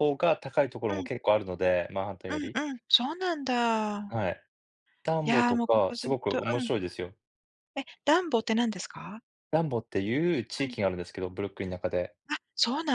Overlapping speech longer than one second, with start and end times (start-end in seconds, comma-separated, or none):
5.2-6.7